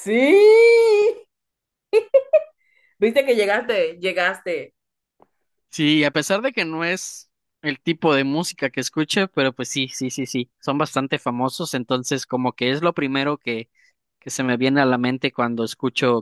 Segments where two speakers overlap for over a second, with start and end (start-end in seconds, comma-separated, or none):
none